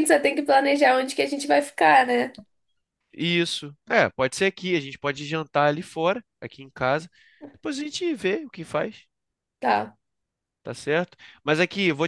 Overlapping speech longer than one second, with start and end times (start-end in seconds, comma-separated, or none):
none